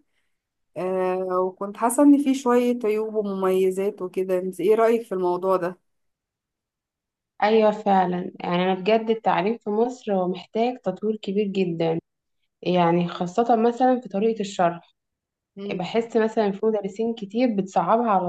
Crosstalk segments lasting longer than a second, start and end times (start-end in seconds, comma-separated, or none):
none